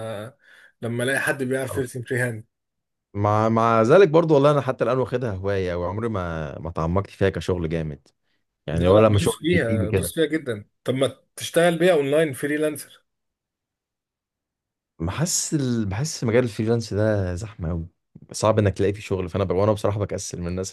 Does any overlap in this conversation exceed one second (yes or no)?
yes